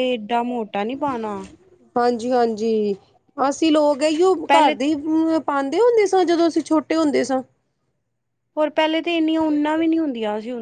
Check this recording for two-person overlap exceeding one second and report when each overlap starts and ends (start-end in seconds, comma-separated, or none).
none